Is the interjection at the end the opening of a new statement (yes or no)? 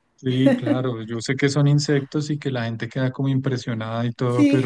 no